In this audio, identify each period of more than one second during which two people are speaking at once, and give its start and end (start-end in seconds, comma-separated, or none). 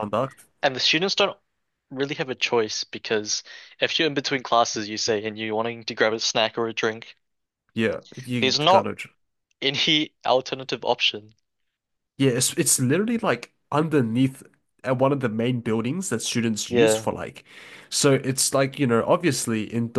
none